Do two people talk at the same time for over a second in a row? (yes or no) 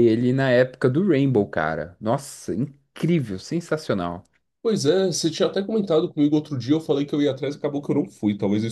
no